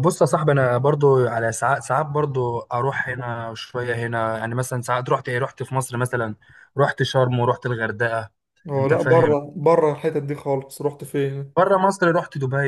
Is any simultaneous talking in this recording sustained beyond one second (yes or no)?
no